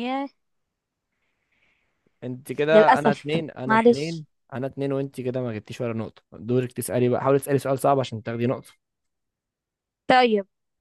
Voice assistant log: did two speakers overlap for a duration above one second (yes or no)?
yes